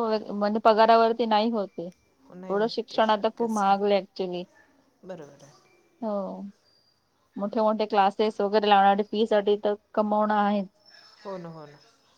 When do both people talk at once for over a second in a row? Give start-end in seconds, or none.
2.5-4.0